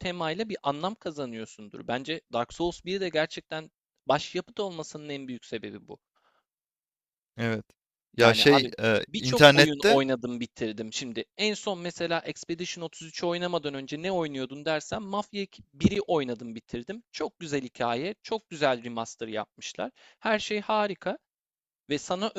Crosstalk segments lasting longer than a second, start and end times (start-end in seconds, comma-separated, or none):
8.2-10.0